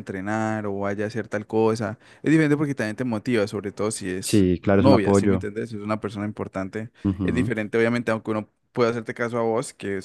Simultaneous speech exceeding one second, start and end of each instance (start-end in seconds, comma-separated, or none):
4.2-5.5